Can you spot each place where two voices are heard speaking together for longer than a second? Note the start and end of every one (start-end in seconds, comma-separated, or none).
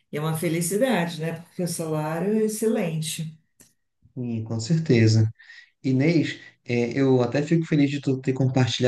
none